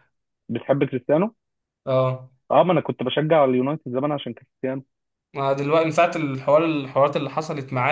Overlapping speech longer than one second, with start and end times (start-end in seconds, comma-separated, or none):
none